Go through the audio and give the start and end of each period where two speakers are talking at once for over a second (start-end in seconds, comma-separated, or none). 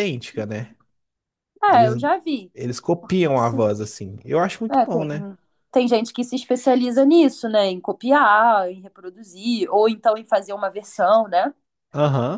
none